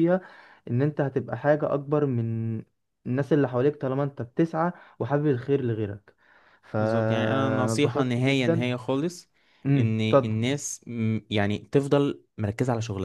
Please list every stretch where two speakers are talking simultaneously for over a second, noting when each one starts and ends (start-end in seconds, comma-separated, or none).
6.8-8.7